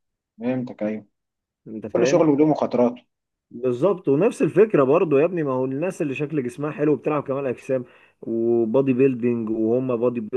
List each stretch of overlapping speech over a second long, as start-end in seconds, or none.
none